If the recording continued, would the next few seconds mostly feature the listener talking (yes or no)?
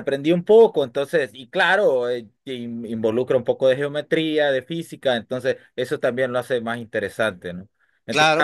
yes